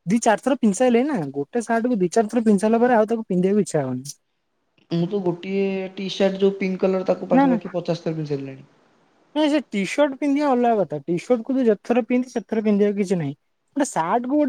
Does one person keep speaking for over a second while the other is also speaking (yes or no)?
no